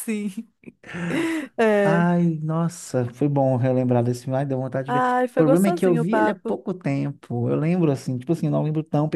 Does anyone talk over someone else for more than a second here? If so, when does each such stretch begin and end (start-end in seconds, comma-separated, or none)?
4.8-6.6